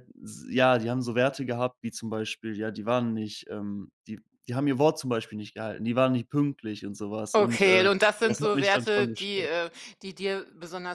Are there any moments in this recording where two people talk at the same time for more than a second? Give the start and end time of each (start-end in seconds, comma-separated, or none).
7.3-9.5